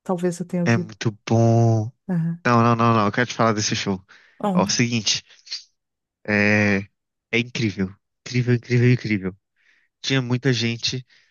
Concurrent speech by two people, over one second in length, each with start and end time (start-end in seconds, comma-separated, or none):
none